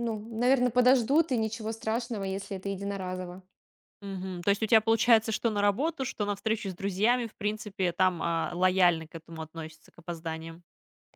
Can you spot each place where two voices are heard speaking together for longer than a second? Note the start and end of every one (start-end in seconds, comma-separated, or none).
none